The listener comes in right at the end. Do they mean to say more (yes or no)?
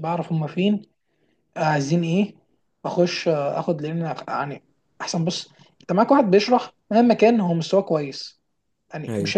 no